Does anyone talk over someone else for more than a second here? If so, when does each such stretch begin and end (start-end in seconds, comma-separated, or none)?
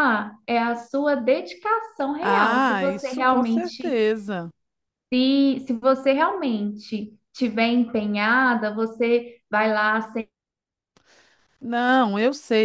2.2-4.0